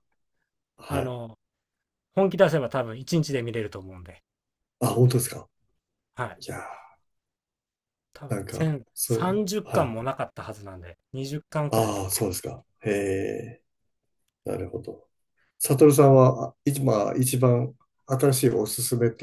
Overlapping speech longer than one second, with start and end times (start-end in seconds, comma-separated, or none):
8.3-9.9